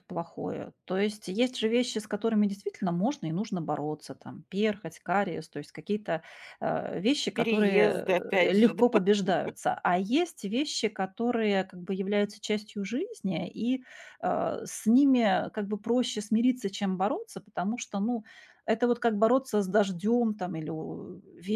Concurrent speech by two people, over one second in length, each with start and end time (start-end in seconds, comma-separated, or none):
7.3-8.8